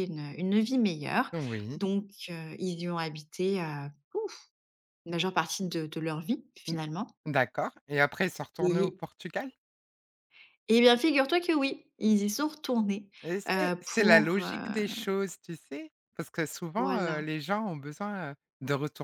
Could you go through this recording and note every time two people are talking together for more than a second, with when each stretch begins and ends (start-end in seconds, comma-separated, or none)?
13.5-15.0